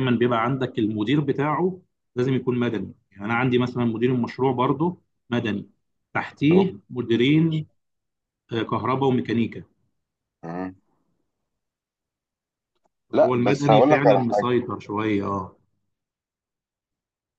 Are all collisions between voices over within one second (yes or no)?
no